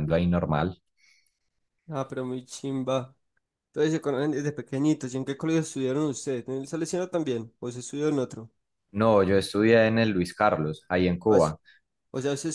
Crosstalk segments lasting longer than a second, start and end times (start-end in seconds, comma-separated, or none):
none